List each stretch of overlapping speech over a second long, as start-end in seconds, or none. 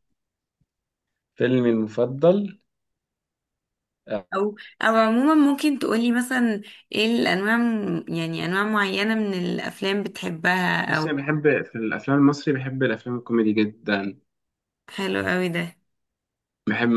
none